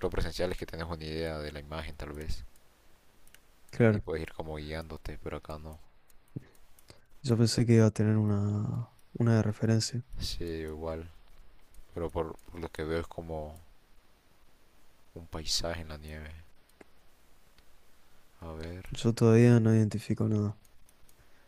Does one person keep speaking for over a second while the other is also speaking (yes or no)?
no